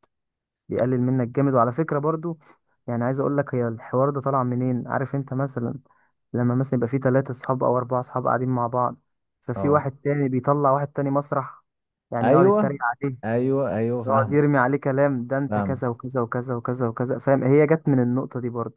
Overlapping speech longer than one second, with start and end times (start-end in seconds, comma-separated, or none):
none